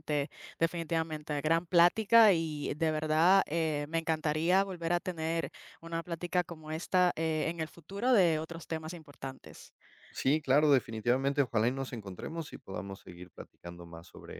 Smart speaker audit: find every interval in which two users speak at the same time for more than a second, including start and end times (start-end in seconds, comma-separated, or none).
none